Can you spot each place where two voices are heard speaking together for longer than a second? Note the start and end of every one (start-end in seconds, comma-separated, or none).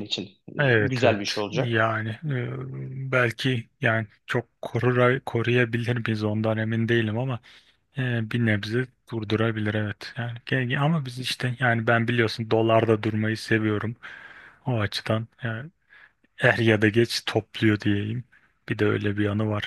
0.6-1.9